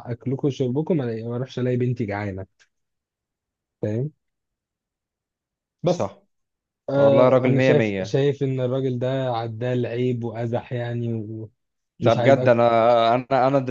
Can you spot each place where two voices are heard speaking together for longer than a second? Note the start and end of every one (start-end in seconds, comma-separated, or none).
6.9-8.2